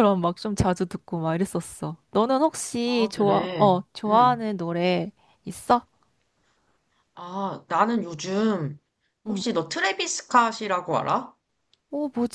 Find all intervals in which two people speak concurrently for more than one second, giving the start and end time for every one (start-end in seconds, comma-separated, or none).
2.8-4.4